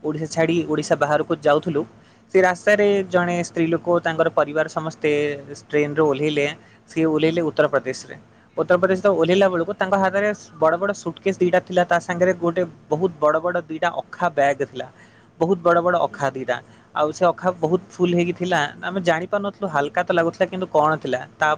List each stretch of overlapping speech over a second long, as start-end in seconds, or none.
none